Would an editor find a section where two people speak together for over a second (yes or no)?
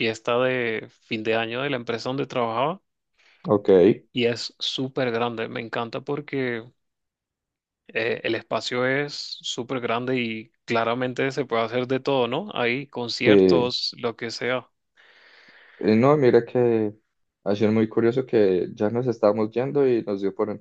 no